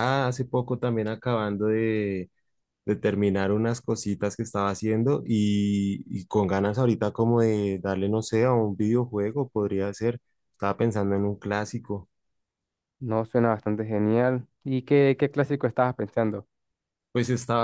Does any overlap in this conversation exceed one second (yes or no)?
no